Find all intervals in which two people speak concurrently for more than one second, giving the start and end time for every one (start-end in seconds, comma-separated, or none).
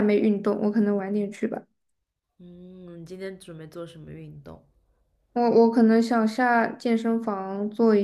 none